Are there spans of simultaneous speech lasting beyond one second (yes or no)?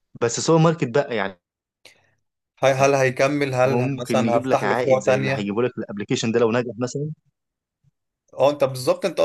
yes